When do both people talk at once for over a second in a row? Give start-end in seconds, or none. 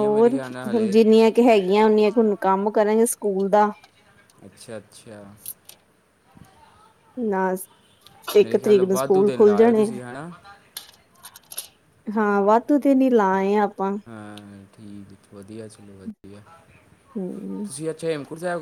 8.4-9.9